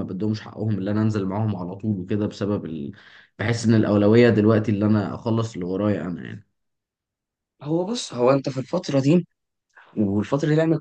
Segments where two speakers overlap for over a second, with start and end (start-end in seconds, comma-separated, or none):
none